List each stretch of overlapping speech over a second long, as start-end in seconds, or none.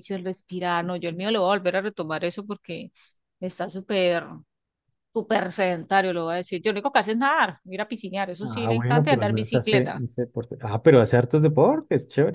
8.4-10.0